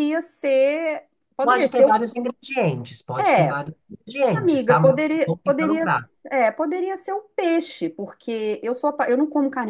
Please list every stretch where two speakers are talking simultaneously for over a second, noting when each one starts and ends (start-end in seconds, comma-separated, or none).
4.3-5.8